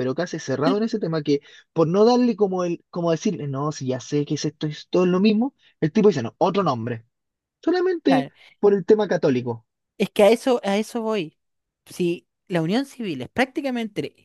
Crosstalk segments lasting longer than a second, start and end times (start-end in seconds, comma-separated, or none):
none